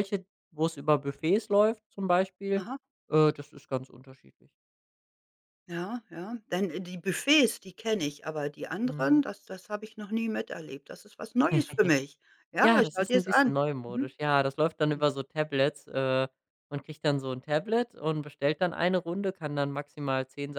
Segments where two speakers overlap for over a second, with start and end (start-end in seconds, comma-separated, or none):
12.6-14.1